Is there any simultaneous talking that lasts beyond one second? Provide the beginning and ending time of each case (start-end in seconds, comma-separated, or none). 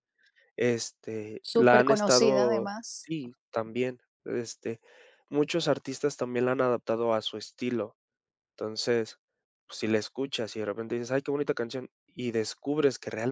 1.4-3.1